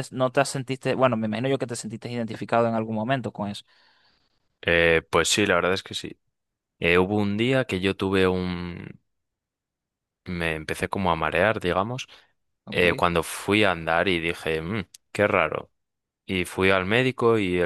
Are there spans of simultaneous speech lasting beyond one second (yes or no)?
no